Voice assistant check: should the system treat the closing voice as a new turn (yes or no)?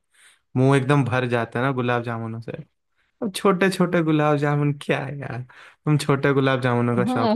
yes